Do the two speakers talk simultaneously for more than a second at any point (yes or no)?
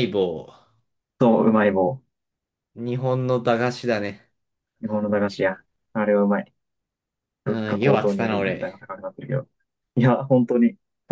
yes